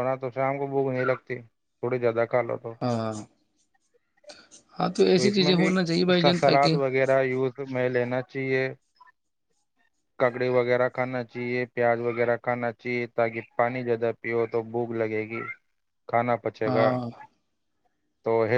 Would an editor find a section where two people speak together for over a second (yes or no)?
yes